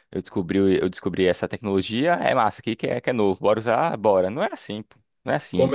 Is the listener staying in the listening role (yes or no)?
no